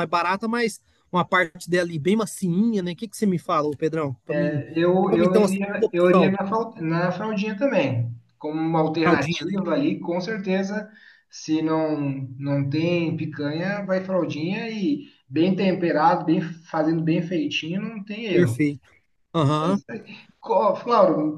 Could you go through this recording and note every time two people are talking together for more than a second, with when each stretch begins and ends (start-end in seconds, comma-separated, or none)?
5.1-6.4